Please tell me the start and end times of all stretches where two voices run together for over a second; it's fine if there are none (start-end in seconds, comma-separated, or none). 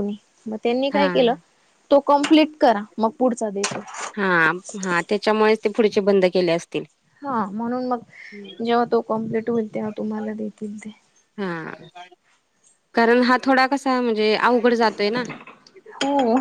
none